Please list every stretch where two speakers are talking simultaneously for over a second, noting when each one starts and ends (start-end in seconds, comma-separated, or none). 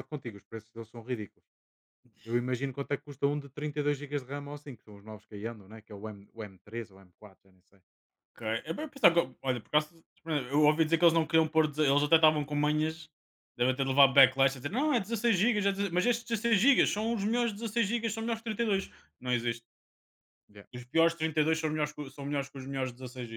none